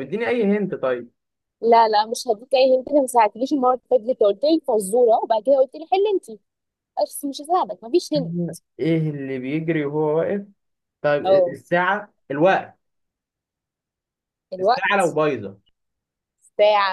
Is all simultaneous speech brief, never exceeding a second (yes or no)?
yes